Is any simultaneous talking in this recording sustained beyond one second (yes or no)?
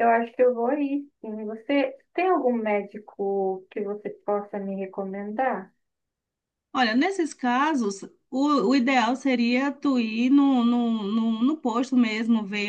no